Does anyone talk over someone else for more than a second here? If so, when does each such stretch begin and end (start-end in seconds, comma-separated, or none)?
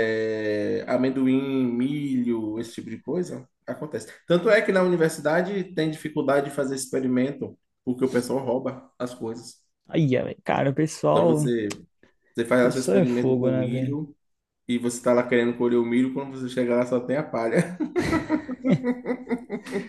12.6-14.0